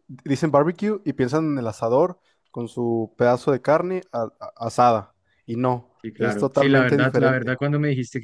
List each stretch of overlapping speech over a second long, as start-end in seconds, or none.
6.0-7.6